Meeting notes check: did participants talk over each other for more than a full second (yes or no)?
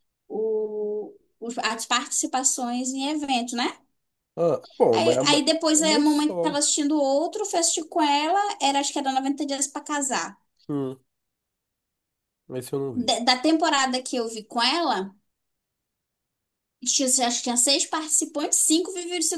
yes